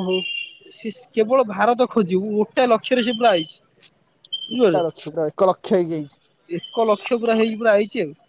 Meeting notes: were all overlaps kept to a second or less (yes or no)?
no